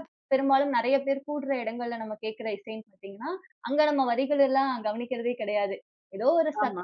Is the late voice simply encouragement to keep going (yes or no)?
yes